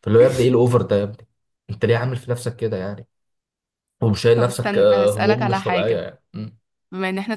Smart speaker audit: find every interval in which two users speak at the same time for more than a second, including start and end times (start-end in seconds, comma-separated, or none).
4.3-6.0